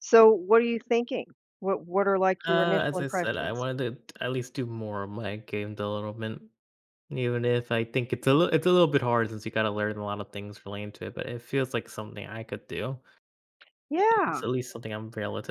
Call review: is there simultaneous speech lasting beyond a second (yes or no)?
yes